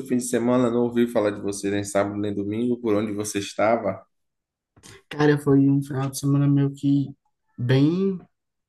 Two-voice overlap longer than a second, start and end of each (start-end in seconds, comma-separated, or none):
none